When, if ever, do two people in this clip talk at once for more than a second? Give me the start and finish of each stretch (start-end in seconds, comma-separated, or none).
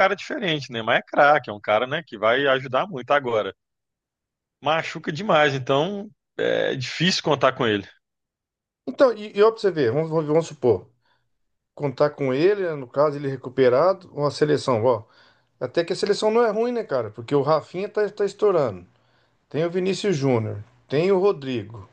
none